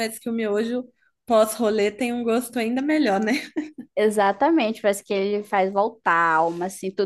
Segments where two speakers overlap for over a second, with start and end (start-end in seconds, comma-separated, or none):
none